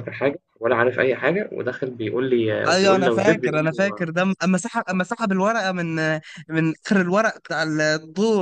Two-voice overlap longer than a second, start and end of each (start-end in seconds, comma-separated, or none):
2.7-4.1